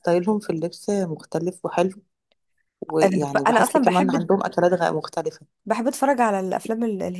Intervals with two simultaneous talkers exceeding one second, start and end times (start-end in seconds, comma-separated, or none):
3.0-4.3